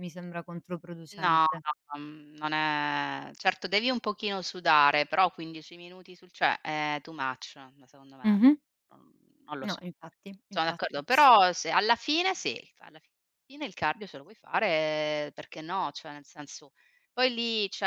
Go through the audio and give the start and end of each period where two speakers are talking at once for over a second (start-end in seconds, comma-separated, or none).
none